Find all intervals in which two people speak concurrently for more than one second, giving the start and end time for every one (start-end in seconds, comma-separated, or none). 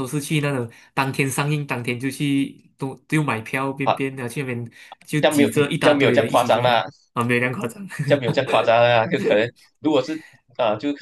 5.2-6.8